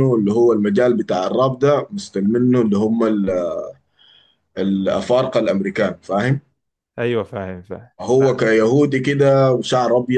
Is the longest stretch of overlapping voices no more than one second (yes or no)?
yes